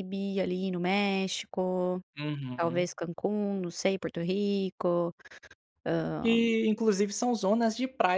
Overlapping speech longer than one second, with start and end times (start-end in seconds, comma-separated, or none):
none